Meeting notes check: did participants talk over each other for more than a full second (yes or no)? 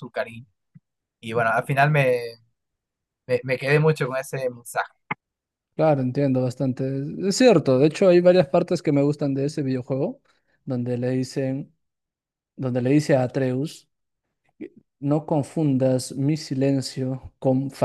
no